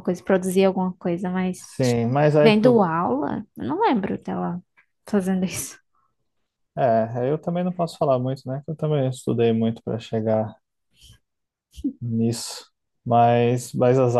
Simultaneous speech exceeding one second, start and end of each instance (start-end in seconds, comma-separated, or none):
none